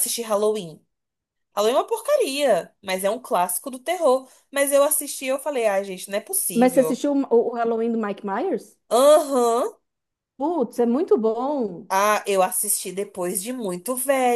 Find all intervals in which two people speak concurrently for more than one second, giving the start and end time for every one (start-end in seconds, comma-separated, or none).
none